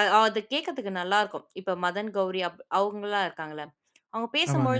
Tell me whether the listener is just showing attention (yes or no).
yes